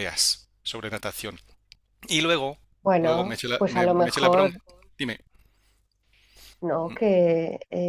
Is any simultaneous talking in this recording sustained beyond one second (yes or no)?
yes